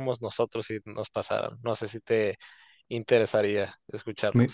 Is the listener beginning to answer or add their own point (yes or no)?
yes